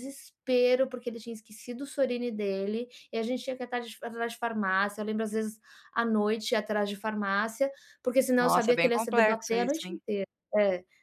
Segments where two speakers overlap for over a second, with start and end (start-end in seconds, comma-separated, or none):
8.4-10.0